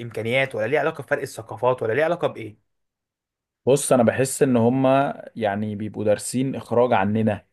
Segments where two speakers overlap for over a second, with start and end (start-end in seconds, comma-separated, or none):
none